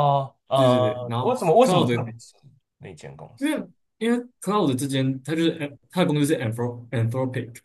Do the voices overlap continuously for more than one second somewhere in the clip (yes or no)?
yes